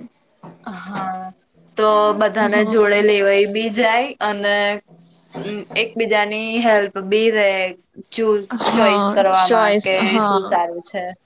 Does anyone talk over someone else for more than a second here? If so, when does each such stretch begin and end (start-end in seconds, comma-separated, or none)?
none